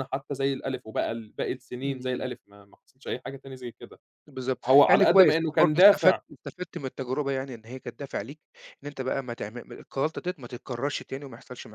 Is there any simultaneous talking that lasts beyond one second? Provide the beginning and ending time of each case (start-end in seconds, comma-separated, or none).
4.7-6.2